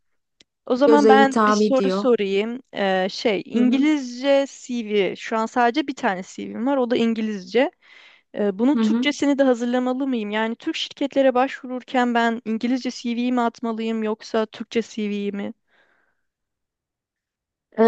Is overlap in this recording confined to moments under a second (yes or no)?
no